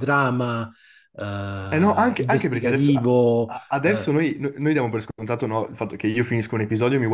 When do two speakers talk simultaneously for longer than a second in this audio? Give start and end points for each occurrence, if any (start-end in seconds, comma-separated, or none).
1.7-4.2